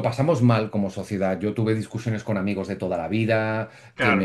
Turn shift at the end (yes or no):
no